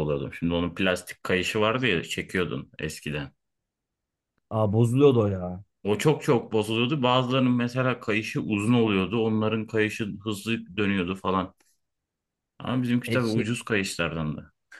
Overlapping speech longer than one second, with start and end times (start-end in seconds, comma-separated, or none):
none